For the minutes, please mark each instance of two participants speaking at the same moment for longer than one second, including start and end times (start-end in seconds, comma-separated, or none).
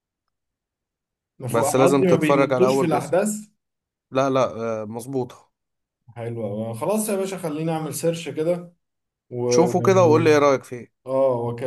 1.5-3.1